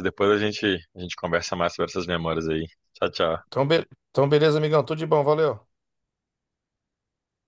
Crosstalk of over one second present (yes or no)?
no